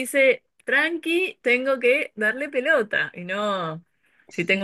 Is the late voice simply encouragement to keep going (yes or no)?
yes